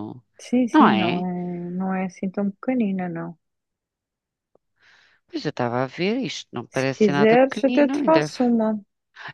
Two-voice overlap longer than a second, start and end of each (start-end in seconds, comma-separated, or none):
6.7-8.3